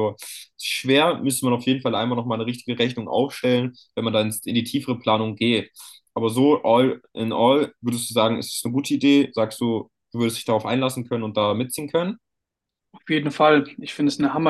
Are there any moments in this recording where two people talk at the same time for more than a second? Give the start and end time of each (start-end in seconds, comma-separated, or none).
none